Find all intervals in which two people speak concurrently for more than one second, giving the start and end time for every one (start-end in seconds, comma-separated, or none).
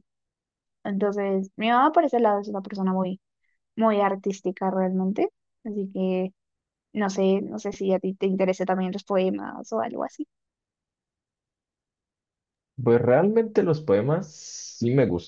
none